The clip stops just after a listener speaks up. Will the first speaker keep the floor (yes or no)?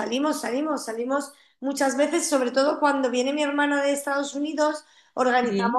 yes